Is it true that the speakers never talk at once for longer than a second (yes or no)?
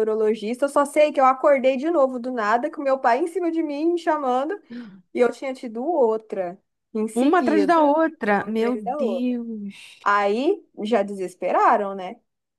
no